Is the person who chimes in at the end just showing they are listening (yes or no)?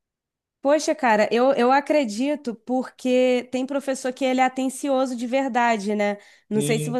yes